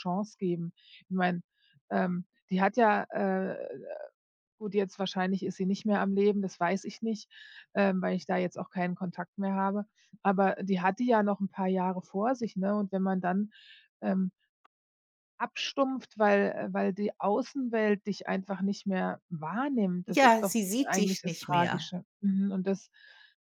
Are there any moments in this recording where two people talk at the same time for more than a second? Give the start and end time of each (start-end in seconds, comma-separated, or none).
20.1-21.9